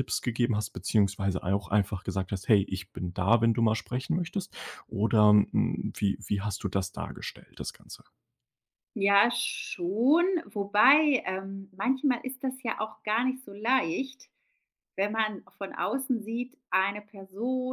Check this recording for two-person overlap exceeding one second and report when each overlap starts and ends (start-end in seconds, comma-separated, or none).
none